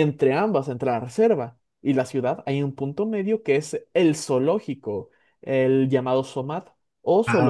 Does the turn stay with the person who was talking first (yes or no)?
yes